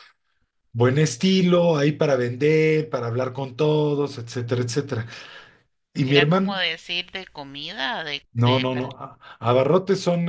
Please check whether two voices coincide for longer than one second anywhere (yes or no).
no